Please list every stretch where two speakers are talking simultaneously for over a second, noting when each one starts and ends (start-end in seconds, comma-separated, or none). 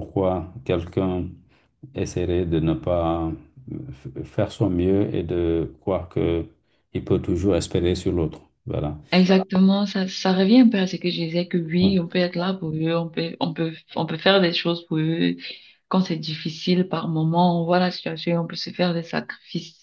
none